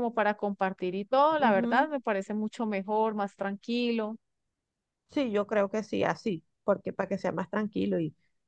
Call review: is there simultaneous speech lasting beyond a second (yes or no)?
no